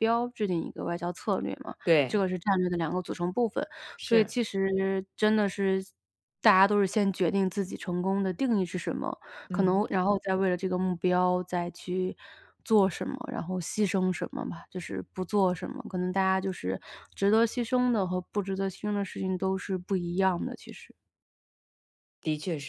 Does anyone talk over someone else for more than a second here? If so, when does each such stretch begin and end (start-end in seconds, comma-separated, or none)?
none